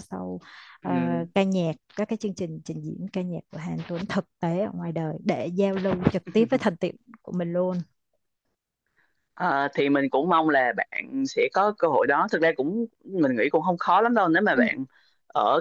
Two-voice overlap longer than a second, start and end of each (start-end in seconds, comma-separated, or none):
none